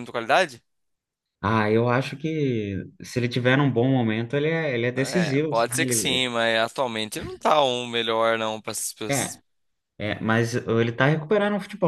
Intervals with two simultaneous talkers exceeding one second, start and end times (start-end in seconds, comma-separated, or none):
4.9-6.3